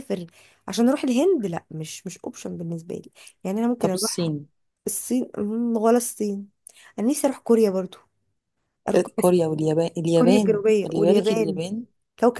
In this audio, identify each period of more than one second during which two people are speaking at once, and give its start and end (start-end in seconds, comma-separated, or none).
10.2-11.6